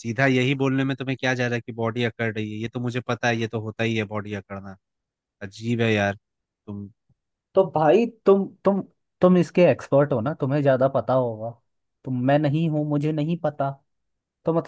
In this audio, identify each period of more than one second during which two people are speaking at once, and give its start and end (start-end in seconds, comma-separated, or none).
none